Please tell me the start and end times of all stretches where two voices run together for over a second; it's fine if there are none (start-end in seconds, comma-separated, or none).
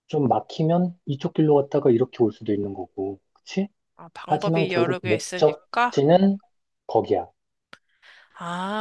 4.2-6.3